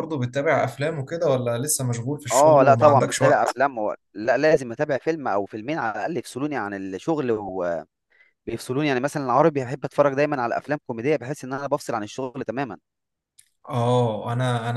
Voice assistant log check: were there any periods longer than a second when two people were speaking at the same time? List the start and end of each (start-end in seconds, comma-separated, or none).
2.3-3.6